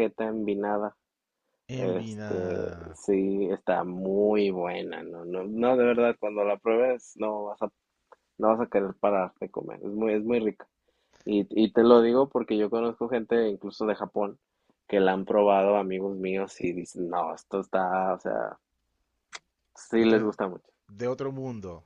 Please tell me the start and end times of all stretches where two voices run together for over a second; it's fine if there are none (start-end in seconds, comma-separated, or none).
1.8-3.0